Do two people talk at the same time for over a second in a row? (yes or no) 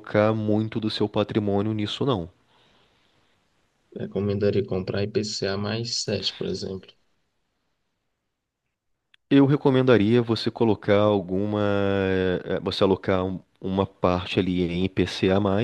no